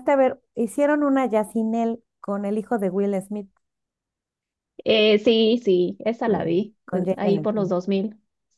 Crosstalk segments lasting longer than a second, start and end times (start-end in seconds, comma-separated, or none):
6.2-7.7